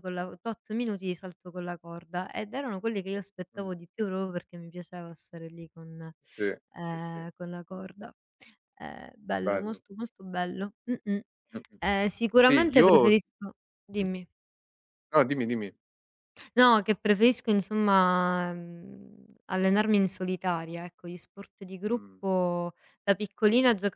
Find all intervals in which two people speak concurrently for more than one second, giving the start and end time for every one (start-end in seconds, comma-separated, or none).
none